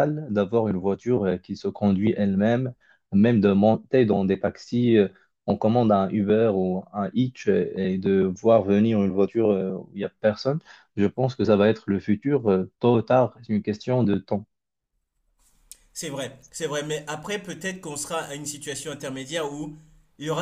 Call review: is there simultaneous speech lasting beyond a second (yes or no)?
no